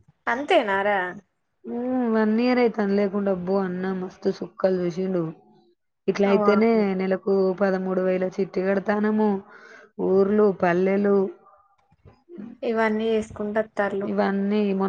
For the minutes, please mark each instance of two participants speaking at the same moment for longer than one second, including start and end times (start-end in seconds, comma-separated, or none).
none